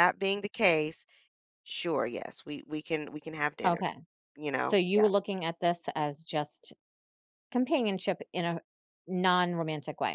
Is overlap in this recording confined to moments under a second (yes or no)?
yes